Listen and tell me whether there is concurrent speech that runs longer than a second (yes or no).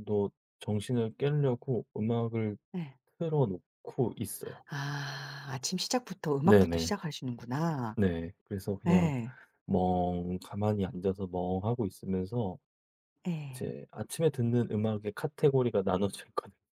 no